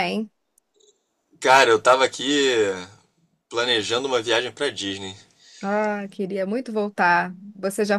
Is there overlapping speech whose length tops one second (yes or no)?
no